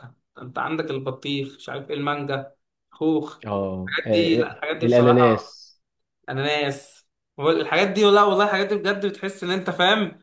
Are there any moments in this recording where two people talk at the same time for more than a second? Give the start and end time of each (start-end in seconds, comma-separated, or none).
4.1-5.6